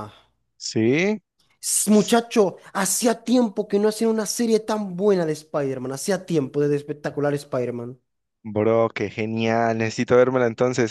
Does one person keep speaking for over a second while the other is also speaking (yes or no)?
no